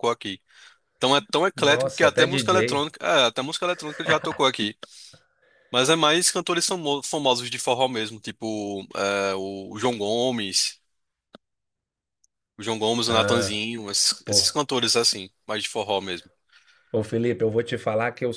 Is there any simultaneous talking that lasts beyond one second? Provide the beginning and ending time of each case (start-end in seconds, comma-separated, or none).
1.6-2.9